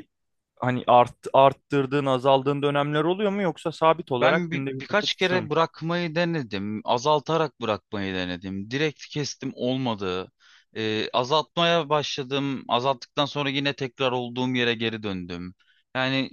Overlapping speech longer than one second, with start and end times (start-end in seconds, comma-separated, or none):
4.2-5.4